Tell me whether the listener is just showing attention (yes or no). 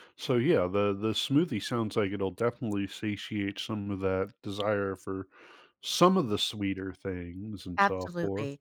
no